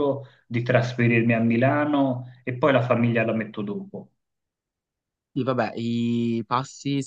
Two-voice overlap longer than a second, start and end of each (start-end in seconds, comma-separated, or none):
none